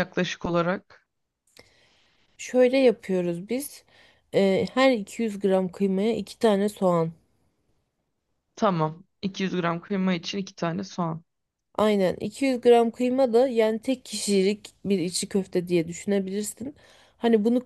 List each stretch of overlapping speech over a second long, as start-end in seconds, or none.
none